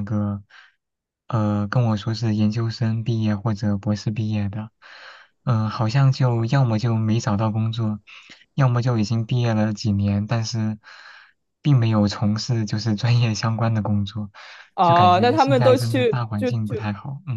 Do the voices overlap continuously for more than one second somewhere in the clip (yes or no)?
yes